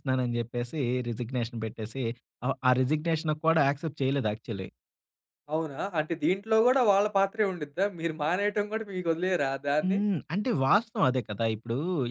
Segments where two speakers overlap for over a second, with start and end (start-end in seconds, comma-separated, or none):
none